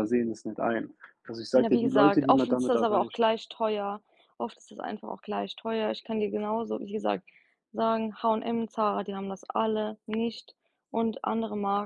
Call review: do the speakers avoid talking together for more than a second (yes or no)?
no